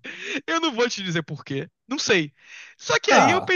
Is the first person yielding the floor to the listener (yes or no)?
no